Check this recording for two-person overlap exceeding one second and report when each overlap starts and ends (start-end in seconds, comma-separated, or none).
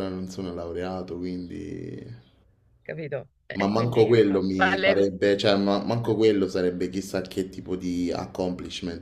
3.5-5.1